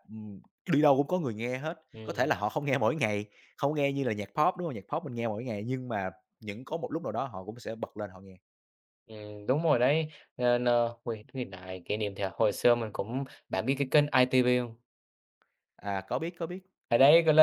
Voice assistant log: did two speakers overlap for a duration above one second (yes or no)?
no